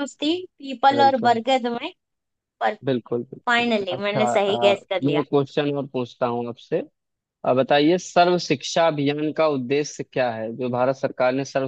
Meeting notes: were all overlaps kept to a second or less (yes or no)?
no